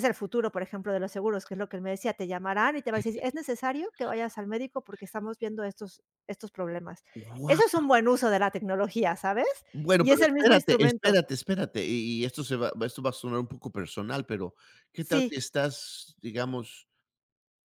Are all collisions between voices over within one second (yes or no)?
no